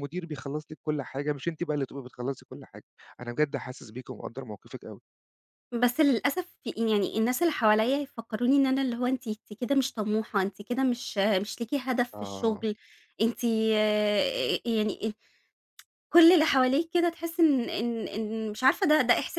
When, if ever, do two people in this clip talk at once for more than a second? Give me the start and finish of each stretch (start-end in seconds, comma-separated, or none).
none